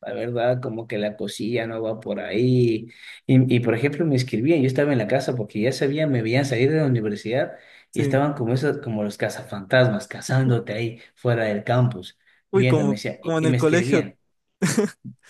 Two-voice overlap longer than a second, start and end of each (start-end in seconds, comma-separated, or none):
12.5-14.1